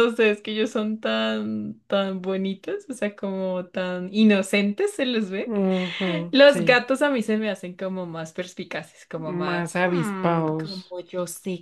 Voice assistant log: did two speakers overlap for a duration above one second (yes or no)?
yes